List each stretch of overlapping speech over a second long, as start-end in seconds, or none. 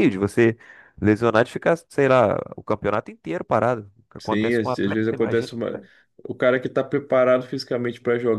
4.2-5.8